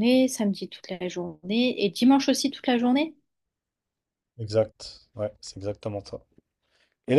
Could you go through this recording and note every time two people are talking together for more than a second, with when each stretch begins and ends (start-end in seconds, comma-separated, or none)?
none